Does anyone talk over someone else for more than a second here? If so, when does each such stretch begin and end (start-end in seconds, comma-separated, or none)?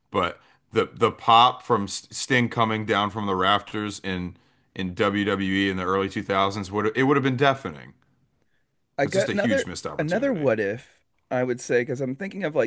9.0-10.5